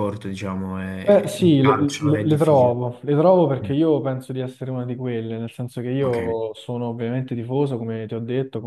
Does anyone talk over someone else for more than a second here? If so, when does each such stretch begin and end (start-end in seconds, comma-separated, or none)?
1.1-2.8